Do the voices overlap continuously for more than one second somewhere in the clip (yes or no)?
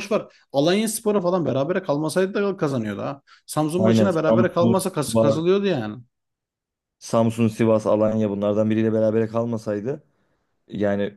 yes